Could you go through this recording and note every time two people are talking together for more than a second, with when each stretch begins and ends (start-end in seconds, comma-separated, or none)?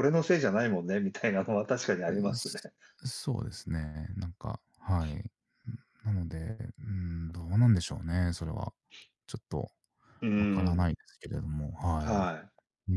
none